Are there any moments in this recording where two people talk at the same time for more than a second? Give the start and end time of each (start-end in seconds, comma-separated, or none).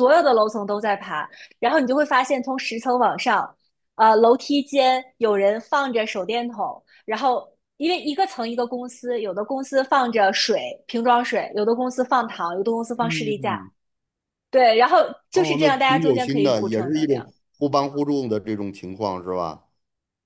15.3-17.3